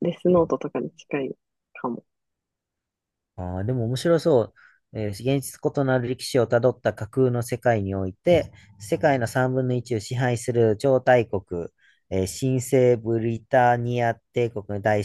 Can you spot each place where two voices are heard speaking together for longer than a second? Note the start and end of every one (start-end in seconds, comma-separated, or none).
none